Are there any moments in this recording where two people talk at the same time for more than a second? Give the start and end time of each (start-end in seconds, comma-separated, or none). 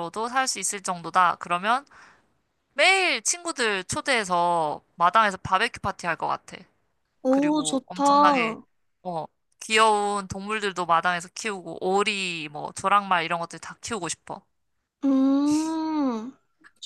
7.3-8.6